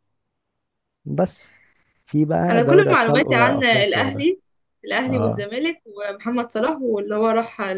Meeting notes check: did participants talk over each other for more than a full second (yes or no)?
yes